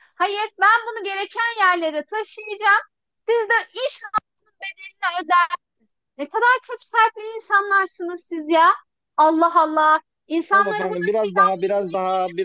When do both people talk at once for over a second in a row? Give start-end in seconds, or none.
10.5-11.7